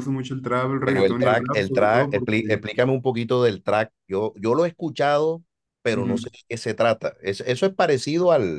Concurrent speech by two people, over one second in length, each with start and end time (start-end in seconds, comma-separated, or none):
0.8-2.6